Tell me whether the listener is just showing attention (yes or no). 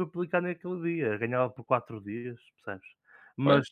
yes